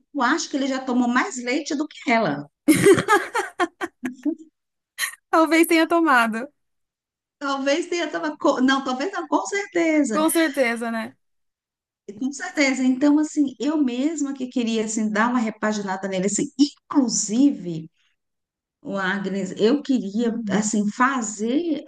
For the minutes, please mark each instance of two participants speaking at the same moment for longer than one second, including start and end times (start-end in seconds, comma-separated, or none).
none